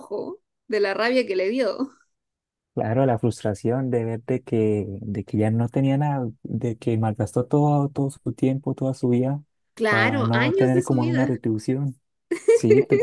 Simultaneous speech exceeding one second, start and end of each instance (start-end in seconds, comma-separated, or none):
9.9-11.4